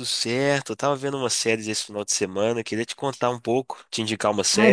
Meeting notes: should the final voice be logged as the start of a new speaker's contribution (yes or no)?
yes